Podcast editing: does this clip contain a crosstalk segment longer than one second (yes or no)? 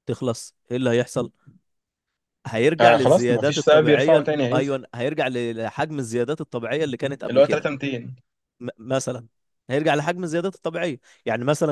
yes